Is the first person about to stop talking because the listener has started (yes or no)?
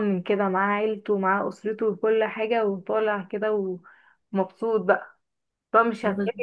no